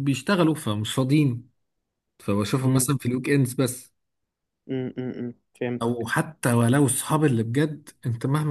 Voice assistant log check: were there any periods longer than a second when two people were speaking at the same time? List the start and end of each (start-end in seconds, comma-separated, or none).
none